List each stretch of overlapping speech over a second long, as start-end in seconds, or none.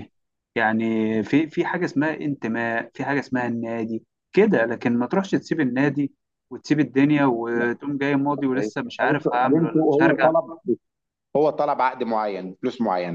8.6-10.3